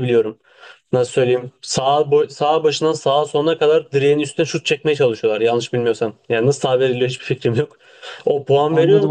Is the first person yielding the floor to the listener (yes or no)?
no